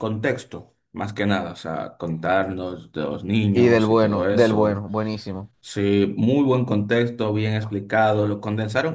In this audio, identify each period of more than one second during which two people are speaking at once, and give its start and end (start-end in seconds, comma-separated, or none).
3.5-4.8